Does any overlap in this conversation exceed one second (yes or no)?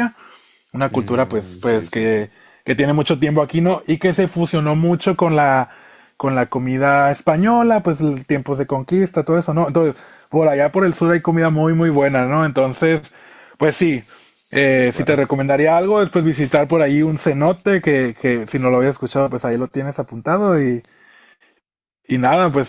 yes